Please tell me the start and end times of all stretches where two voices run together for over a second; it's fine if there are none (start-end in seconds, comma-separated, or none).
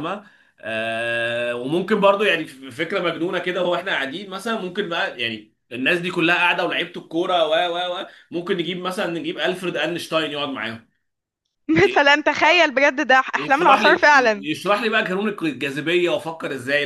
none